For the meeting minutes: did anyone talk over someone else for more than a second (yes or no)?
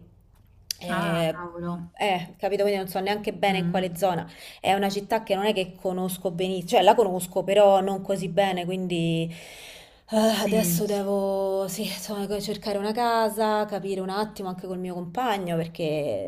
no